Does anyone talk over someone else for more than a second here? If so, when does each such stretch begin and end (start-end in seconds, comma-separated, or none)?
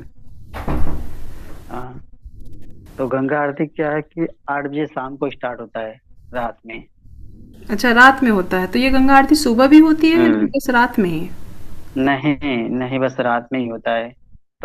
none